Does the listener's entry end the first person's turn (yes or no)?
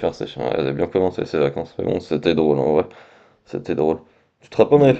no